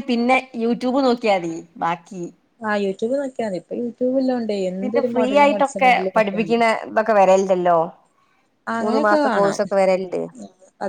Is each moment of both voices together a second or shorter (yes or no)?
no